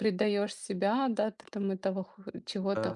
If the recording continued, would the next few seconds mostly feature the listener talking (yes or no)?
no